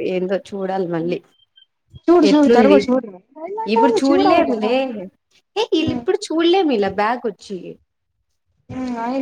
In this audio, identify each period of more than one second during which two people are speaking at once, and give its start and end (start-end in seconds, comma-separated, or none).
none